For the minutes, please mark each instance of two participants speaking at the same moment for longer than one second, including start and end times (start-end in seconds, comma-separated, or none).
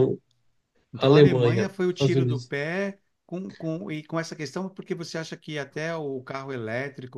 1.0-2.5